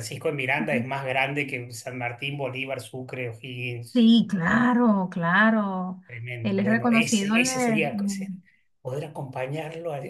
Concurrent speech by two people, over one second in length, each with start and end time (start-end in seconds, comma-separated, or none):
6.4-8.3